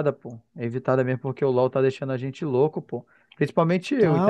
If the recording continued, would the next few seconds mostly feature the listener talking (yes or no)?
yes